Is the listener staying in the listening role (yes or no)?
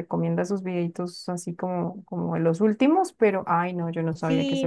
no